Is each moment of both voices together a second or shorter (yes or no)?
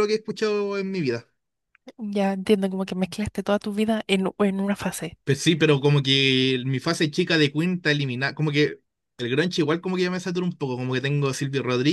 yes